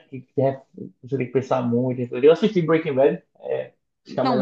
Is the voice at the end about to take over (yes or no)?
yes